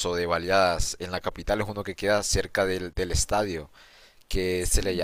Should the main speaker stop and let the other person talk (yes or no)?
no